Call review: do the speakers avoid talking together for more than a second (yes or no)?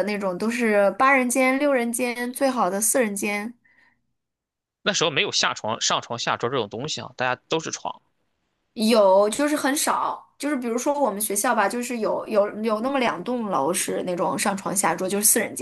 yes